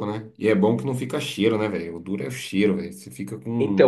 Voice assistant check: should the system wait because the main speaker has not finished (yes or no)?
no